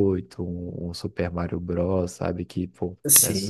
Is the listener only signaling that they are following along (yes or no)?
no